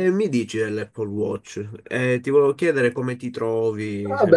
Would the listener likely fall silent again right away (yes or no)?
no